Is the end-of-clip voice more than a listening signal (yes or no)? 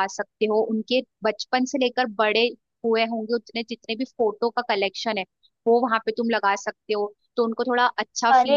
yes